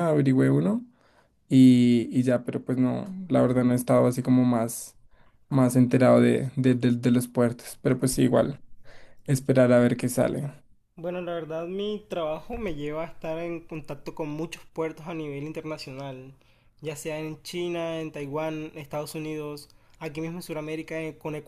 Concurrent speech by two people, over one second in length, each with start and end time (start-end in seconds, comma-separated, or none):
none